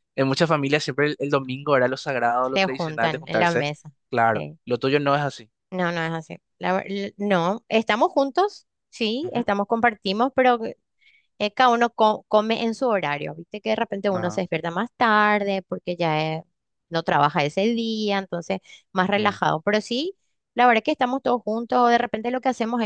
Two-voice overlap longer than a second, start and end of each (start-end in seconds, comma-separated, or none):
2.4-3.6